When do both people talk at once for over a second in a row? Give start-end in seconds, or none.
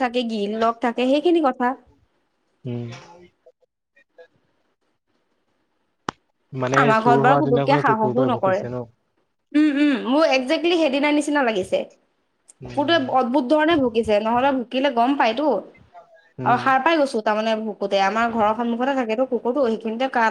6.8-8.6